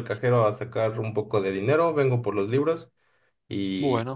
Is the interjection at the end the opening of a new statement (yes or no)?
no